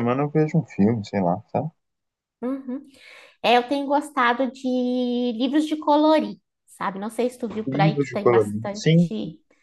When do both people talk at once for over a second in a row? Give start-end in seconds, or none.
7.7-9.1